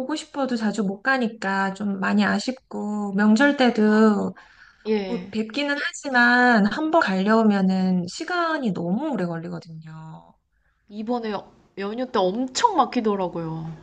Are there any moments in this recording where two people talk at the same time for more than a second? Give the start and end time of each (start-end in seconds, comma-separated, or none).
none